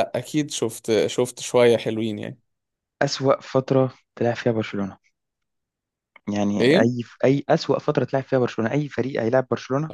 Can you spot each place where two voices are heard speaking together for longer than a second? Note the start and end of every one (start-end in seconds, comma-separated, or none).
none